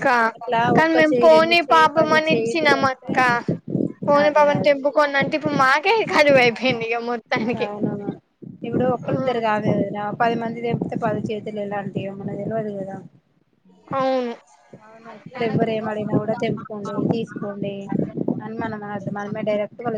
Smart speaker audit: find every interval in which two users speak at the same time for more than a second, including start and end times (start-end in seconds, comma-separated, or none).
0.8-3.1